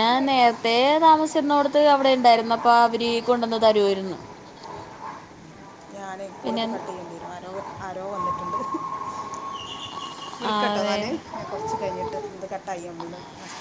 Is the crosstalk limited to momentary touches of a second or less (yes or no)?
yes